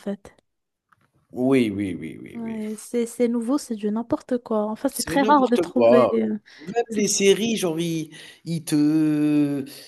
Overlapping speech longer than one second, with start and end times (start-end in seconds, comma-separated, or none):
4.9-6.2